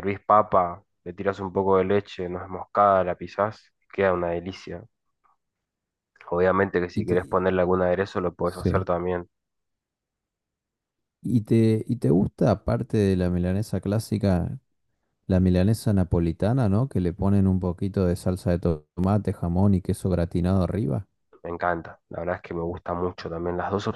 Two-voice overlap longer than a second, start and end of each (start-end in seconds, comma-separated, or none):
none